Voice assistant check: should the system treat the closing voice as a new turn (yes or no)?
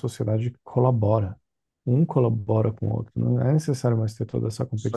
yes